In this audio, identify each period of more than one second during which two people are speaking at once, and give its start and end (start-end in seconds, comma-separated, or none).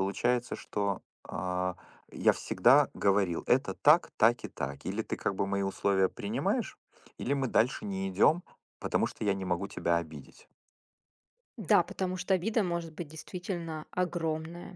none